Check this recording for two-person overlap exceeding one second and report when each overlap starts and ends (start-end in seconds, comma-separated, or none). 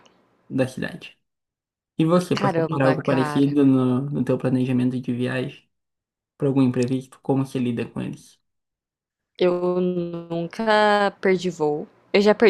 2.3-3.6